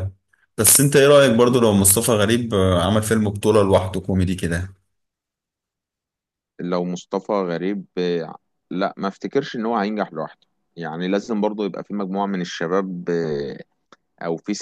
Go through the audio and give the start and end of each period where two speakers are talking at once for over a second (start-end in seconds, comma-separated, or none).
none